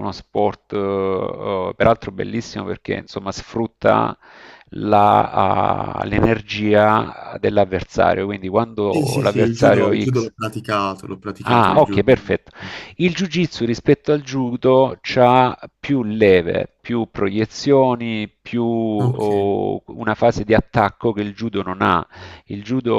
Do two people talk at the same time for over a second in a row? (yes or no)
yes